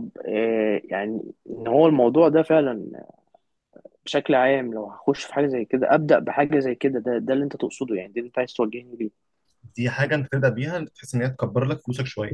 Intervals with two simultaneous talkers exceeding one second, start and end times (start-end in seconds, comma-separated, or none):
none